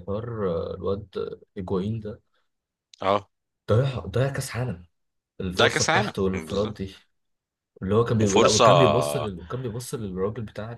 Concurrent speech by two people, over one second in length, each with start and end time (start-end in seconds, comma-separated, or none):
5.5-6.8